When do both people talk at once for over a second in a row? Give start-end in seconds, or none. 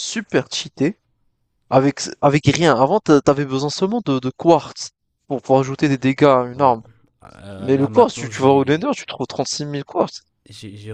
7.6-8.9